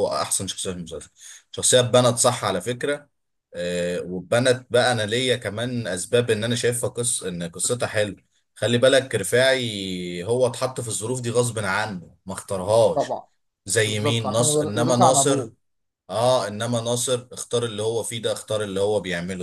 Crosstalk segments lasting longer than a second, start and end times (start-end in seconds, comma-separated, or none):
13.8-15.5